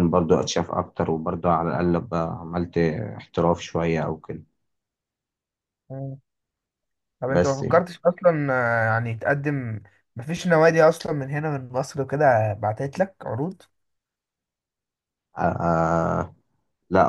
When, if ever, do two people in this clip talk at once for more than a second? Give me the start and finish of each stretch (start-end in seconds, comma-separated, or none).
none